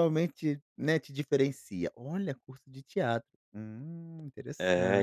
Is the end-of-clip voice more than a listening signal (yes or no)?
yes